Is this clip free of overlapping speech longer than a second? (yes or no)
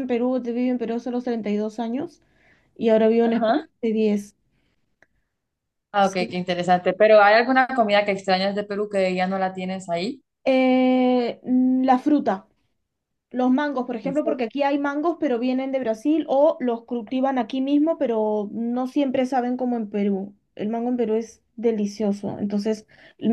yes